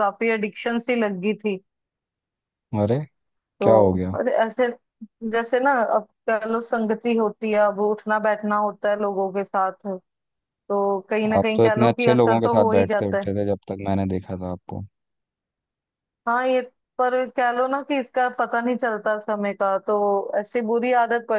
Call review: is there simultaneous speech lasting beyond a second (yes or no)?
yes